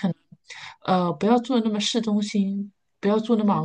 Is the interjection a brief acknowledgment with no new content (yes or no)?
yes